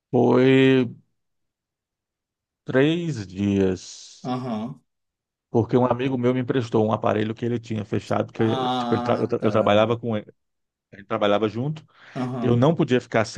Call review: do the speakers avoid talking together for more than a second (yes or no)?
no